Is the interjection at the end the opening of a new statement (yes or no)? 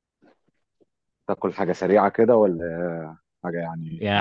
yes